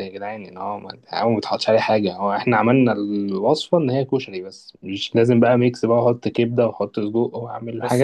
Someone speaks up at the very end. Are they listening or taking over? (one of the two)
taking over